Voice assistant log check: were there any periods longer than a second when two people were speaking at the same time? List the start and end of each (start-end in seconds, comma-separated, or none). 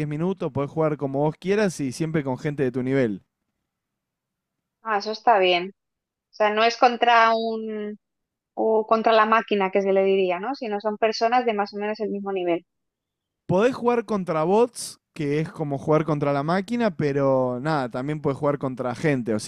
none